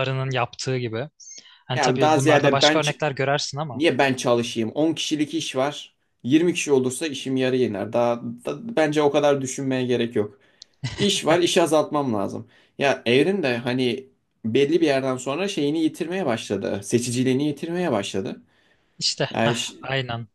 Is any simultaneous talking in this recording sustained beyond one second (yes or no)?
yes